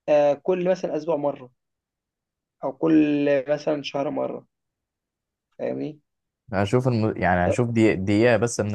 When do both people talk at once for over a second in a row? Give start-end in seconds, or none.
none